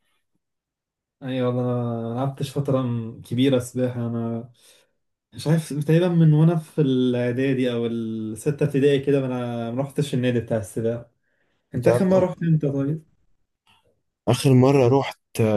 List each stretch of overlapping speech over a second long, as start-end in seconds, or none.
none